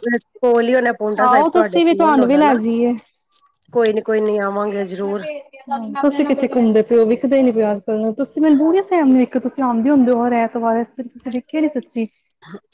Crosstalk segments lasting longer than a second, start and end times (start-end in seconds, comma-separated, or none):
1.3-2.5